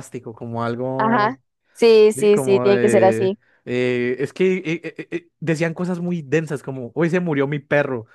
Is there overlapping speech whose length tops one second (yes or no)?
yes